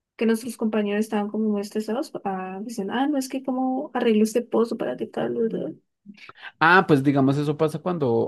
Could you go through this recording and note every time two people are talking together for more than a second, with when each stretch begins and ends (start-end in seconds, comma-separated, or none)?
none